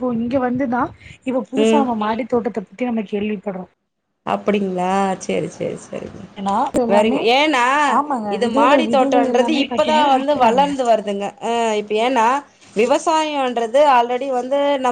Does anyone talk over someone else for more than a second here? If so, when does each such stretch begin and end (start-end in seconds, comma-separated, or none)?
8.4-10.6